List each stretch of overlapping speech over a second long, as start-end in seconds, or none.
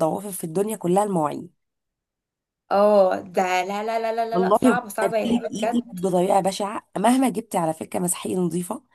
4.3-5.8